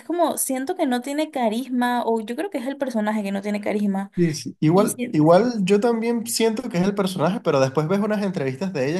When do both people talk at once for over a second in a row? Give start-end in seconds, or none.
none